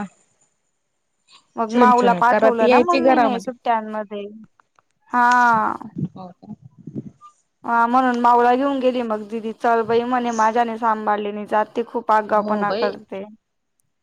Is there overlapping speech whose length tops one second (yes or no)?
yes